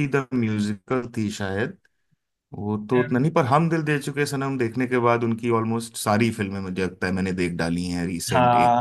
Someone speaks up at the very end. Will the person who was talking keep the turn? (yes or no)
no